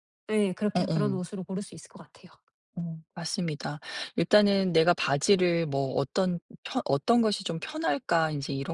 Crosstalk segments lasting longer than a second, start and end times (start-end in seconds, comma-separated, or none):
none